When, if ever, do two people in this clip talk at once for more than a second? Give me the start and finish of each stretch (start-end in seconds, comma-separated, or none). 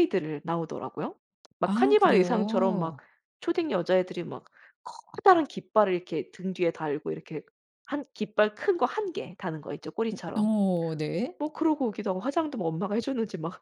1.6-3.0